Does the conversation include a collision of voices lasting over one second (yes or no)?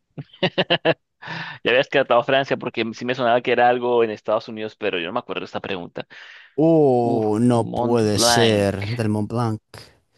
yes